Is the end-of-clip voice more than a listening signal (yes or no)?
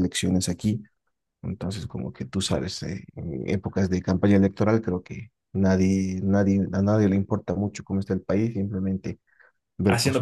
yes